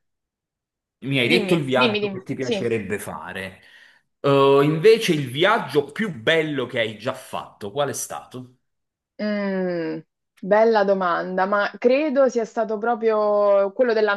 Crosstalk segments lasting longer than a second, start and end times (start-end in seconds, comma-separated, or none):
1.2-2.7